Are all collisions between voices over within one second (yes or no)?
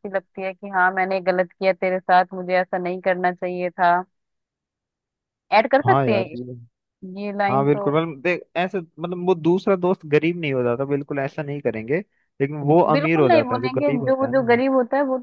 no